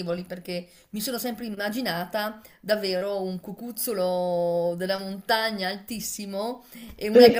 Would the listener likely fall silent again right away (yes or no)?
yes